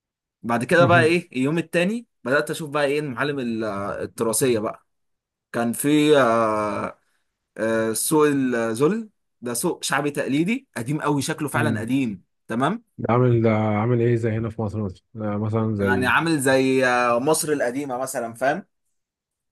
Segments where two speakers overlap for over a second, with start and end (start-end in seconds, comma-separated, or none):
none